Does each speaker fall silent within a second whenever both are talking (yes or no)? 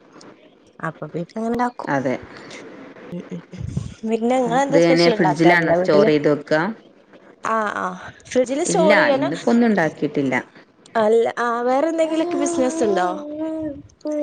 no